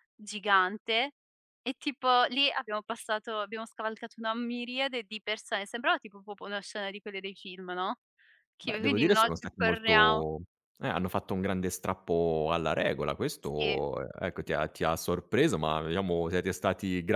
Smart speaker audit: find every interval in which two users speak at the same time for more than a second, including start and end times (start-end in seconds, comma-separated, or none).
8.6-10.2